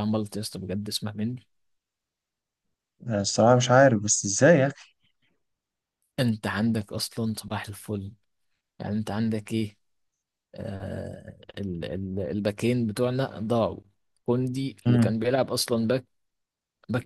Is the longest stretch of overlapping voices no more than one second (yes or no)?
yes